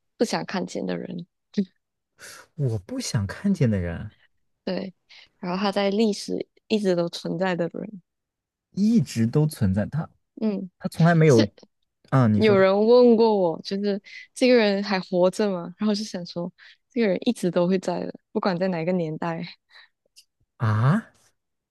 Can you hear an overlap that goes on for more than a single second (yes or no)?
no